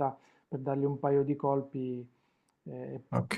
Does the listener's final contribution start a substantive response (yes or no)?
no